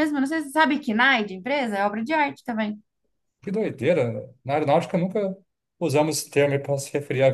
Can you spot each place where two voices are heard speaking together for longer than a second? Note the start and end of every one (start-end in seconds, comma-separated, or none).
none